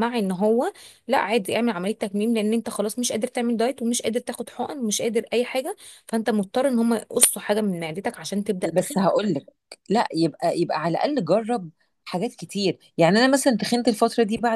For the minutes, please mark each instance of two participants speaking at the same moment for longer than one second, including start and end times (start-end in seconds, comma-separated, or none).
none